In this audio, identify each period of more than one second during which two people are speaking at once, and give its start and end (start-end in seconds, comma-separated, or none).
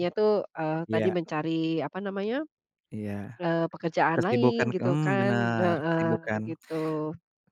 4.2-6.1